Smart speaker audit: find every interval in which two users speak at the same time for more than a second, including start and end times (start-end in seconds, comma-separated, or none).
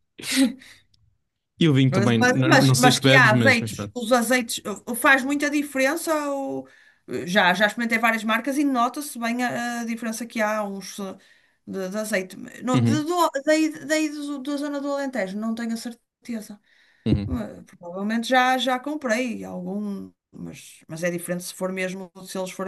1.9-3.9